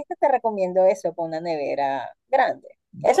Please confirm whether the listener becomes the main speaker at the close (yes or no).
no